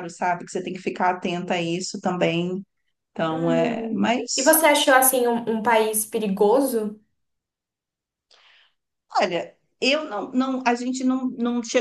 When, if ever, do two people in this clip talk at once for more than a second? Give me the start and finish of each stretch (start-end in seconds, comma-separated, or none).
3.3-4.7